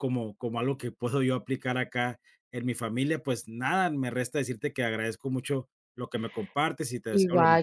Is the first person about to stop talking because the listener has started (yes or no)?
yes